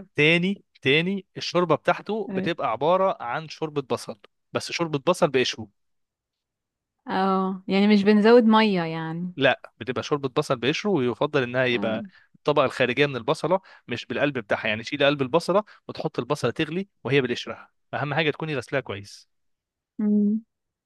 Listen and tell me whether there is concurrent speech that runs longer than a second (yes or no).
no